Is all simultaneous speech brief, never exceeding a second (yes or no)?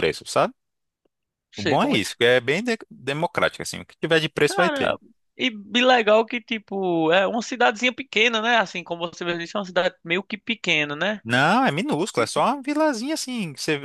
yes